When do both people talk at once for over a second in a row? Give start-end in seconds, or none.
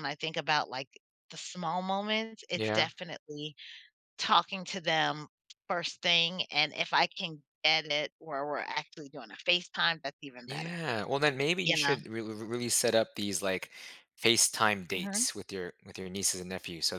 none